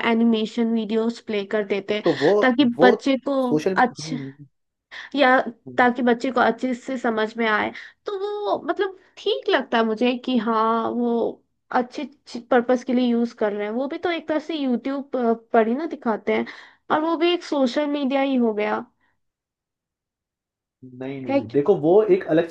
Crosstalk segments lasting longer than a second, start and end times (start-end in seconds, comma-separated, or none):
none